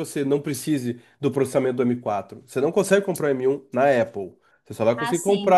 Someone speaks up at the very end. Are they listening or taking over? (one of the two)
listening